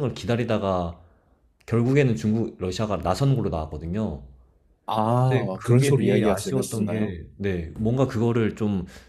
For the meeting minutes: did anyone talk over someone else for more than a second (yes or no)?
yes